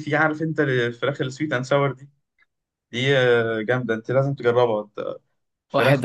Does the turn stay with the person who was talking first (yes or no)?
no